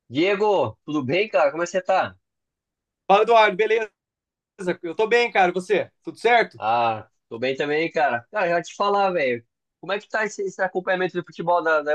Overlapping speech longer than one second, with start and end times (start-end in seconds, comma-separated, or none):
none